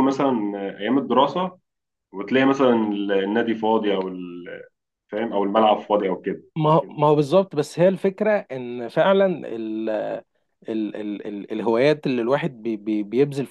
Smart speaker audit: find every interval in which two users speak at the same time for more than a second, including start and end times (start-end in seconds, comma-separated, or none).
none